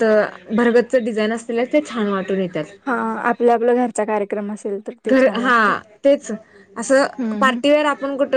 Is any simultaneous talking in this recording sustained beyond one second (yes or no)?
no